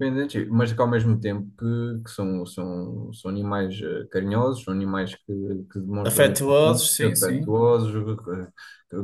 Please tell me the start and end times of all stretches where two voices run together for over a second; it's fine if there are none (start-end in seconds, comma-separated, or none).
6.0-7.5